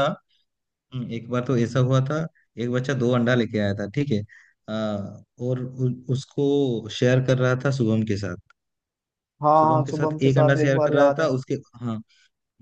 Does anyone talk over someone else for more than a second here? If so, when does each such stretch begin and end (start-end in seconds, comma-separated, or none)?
9.6-11.2